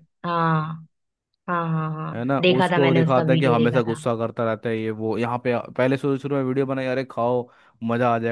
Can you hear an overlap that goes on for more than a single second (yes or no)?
yes